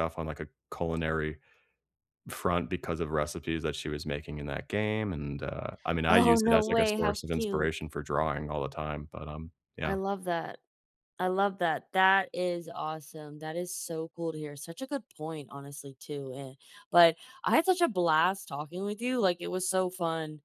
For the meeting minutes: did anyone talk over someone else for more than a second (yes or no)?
yes